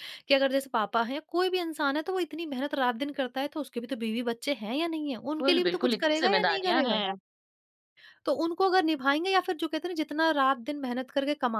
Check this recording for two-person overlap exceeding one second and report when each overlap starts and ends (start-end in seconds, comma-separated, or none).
5.4-7.0